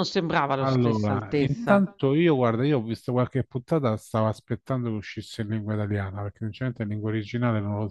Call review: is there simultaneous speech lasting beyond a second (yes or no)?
yes